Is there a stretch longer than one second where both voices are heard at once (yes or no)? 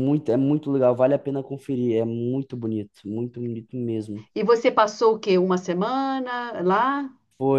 no